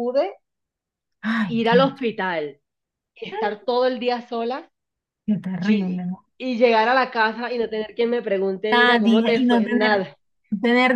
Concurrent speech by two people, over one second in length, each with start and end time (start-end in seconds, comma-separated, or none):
8.7-10.1